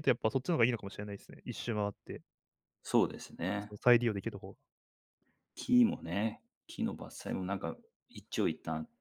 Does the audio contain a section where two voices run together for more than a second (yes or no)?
no